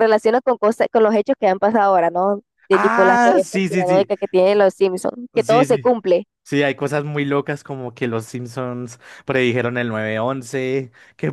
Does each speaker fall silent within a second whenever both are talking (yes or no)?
no